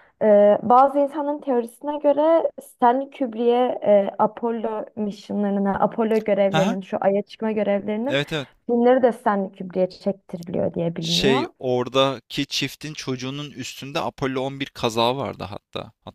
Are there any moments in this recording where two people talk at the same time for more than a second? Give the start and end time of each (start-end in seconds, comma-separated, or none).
none